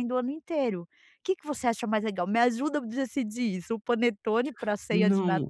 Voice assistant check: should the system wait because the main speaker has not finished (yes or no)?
no